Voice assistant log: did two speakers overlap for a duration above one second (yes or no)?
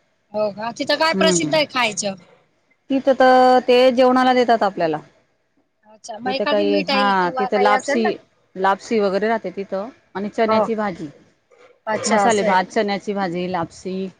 yes